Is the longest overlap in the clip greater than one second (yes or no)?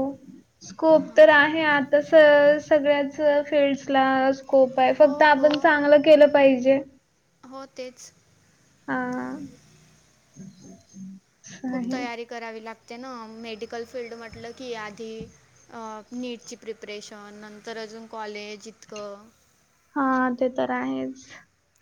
no